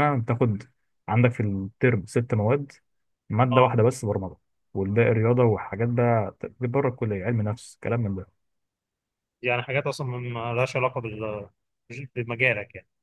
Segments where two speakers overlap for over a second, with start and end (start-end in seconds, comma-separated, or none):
none